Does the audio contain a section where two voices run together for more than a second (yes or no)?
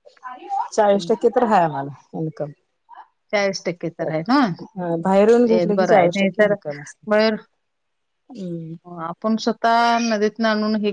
yes